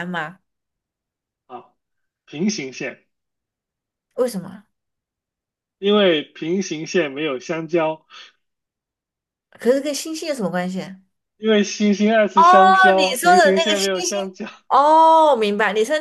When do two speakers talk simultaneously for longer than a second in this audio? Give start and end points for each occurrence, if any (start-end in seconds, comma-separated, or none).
12.3-14.2